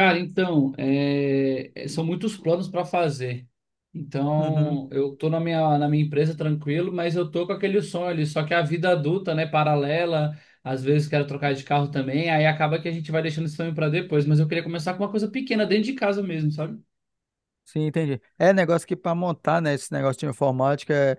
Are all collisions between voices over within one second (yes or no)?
yes